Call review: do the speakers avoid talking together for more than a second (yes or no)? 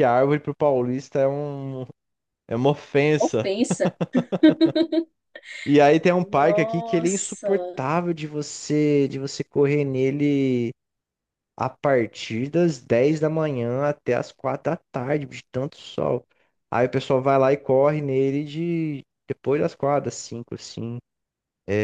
no